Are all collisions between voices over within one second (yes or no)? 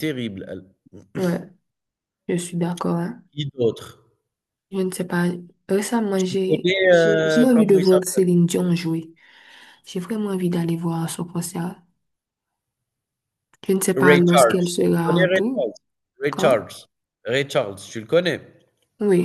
no